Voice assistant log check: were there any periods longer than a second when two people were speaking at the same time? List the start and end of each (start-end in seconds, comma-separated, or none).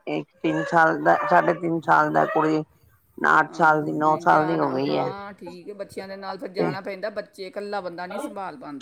3.5-5.1